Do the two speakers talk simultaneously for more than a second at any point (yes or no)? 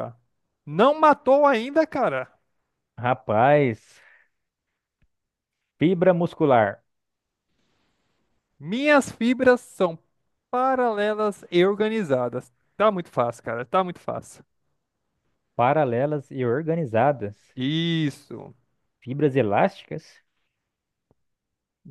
no